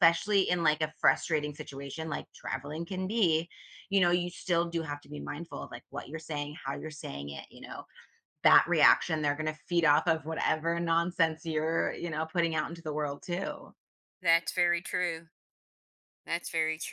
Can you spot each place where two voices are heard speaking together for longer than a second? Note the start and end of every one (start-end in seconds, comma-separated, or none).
none